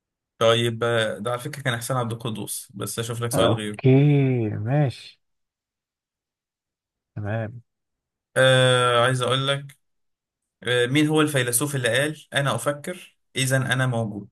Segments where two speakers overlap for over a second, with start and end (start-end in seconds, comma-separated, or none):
none